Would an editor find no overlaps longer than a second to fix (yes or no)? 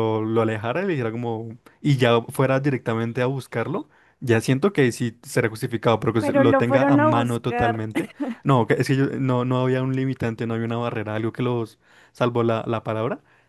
no